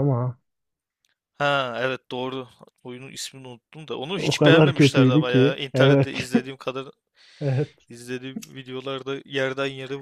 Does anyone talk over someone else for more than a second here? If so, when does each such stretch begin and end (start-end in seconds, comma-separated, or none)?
4.2-6.3